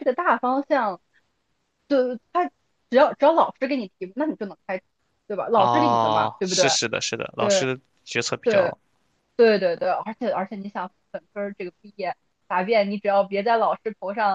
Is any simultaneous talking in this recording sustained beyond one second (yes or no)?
yes